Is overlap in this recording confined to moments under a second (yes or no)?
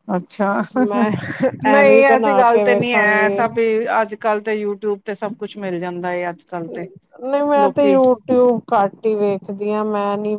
no